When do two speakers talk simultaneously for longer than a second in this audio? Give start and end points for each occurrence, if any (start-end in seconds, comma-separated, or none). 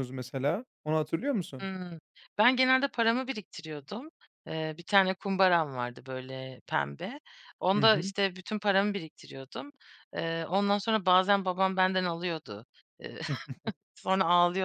none